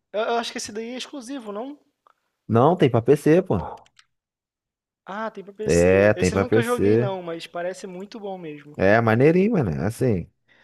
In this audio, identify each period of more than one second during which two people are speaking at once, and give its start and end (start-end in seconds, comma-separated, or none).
5.6-7.1